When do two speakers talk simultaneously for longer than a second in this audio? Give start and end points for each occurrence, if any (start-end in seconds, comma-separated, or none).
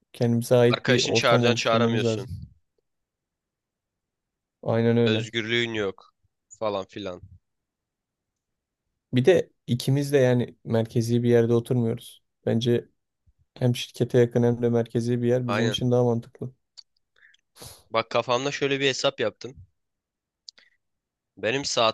0.7-2.3